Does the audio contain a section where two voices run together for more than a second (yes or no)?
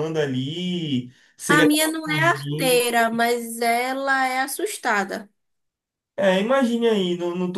yes